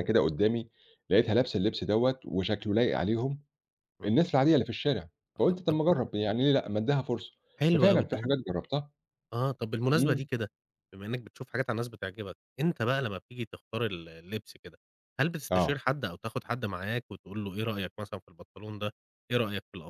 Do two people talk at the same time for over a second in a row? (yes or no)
no